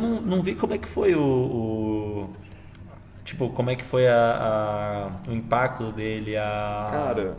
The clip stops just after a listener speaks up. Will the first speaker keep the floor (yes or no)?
yes